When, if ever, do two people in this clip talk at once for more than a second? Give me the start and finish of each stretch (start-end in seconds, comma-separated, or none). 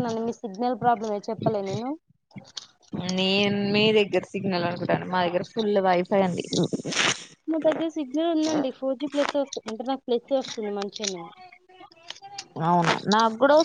none